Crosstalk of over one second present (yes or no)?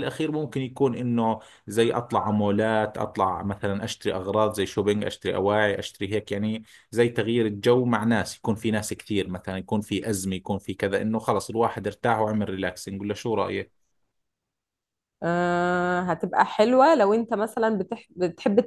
no